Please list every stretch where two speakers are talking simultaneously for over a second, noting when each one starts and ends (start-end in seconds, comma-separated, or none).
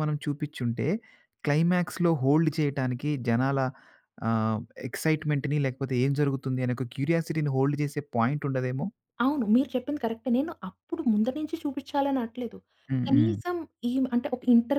none